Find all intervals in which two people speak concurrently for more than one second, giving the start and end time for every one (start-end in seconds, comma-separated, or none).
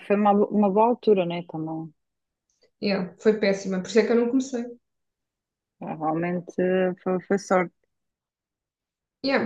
none